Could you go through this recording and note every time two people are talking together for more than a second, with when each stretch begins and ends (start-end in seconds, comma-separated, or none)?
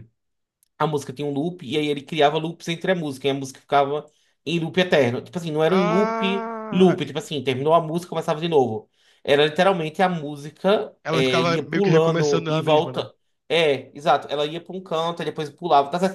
5.7-7.0, 11.0-13.1